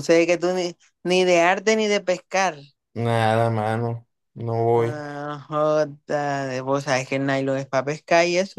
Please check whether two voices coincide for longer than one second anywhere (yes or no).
no